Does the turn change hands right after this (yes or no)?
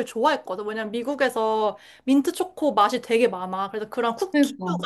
no